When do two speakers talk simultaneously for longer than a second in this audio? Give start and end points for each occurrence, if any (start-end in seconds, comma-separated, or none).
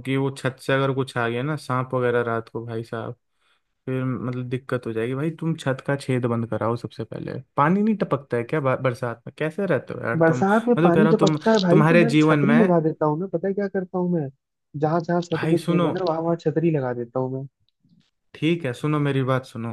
10.2-12.8